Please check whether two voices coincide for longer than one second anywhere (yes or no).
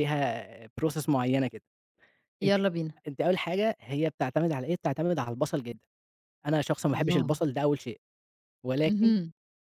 no